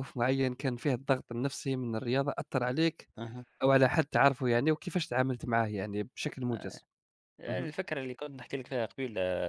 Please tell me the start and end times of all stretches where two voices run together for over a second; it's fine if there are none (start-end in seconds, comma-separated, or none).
none